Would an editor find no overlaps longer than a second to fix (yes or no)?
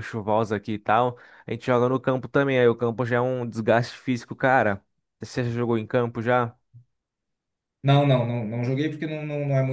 yes